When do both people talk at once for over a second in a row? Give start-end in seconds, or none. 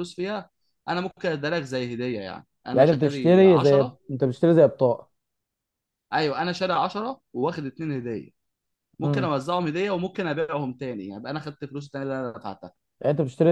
2.7-4.0